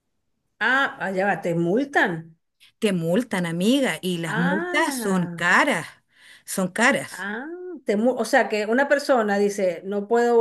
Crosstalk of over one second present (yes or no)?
yes